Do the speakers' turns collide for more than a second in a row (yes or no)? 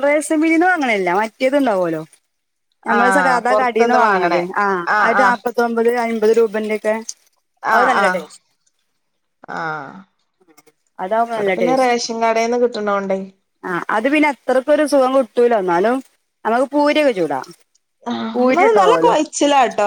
yes